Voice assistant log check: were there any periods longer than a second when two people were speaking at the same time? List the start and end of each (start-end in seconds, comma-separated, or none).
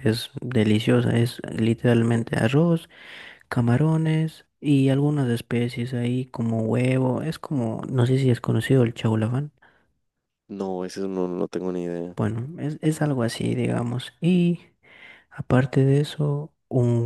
none